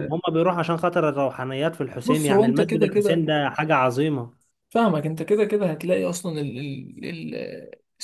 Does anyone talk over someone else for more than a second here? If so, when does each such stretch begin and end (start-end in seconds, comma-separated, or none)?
2.0-3.3